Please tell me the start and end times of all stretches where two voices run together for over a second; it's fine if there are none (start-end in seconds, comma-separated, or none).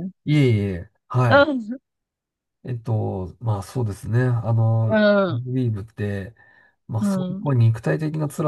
none